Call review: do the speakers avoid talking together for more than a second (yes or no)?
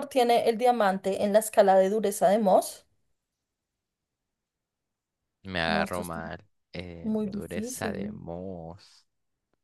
no